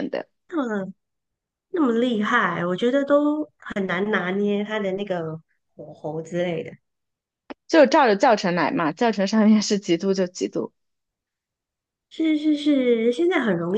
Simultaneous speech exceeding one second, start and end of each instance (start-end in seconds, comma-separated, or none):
none